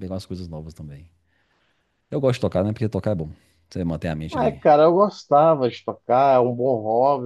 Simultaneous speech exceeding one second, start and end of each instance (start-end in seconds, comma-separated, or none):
none